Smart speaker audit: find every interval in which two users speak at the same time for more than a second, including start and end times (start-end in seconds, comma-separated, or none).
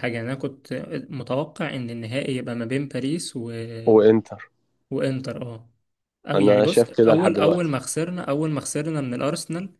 6.3-7.7